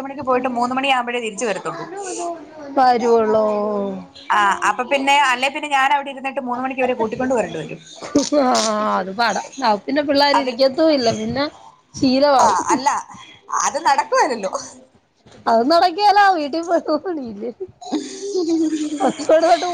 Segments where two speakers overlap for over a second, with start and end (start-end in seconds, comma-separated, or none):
none